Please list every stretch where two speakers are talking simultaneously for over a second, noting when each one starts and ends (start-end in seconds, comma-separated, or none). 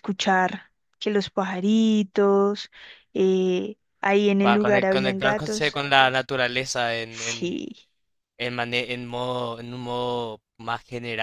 4.4-5.8